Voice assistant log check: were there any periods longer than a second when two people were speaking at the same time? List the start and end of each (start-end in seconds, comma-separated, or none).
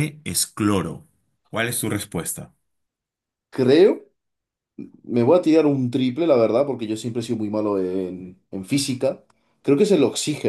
none